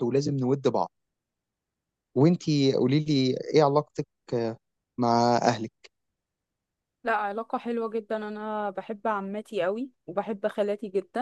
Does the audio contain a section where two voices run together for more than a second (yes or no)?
no